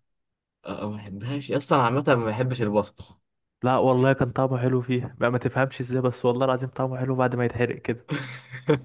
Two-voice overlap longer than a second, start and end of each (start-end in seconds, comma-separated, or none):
none